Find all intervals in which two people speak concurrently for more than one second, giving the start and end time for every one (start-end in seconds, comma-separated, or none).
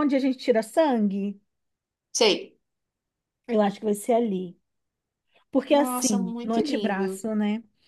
5.7-7.2